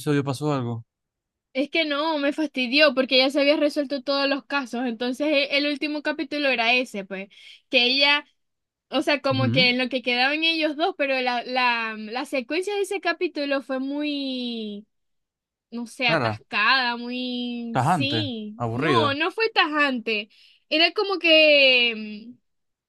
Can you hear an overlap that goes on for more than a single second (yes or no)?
yes